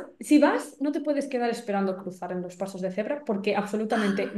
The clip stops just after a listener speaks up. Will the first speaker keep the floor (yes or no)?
yes